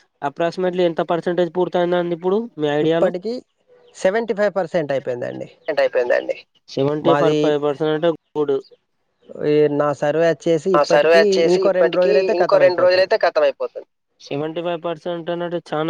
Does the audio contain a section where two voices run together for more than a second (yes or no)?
yes